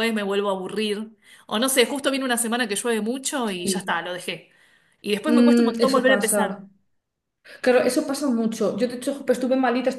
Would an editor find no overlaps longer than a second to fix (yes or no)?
no